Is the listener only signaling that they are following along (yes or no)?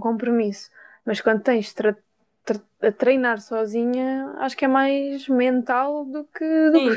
no